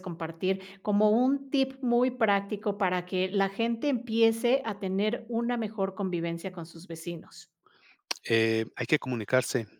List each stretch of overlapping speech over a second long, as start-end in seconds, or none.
none